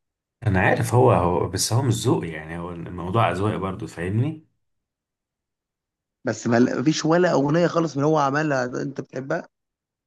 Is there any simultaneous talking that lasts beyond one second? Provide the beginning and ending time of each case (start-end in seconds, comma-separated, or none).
none